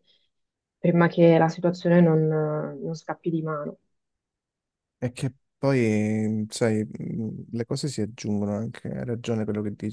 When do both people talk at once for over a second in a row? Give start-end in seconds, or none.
none